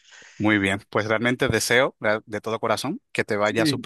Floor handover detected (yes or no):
no